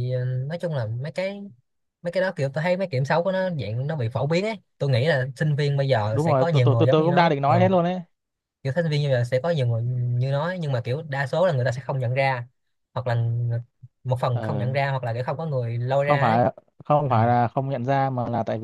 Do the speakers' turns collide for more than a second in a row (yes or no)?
yes